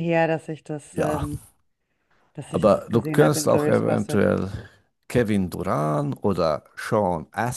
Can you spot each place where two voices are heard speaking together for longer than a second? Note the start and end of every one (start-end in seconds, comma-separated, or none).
2.5-4.3